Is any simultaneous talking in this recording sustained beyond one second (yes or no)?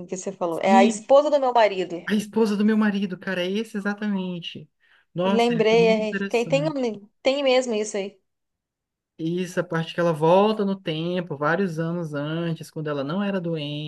yes